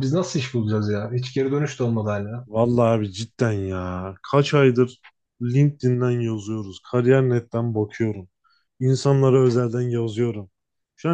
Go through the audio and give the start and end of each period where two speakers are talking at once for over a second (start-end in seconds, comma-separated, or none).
none